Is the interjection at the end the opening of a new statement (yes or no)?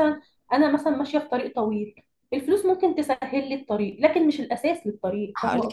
yes